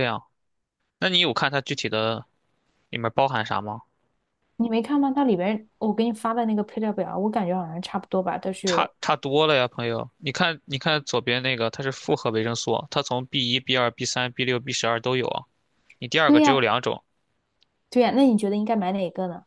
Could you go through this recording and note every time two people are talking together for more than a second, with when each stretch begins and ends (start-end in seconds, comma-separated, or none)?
none